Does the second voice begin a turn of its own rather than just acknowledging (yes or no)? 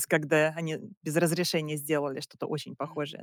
yes